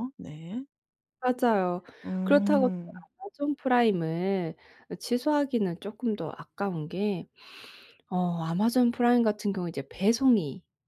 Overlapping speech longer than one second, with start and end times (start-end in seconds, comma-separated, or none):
none